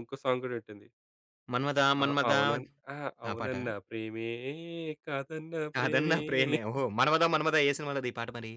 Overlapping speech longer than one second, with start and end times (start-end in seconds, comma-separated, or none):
none